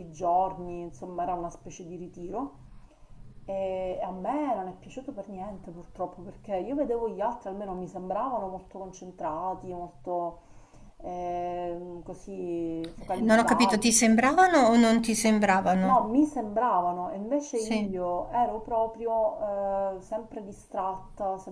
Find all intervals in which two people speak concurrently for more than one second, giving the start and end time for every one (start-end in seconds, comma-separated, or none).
none